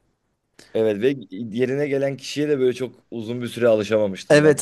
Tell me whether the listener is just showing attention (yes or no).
no